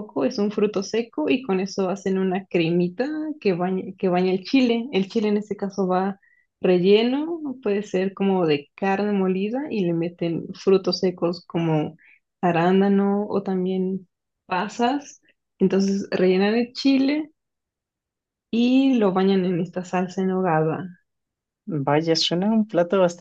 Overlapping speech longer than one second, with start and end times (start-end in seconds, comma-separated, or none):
none